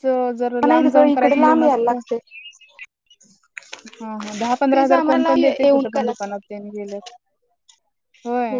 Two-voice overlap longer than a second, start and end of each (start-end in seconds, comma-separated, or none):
4.7-6.1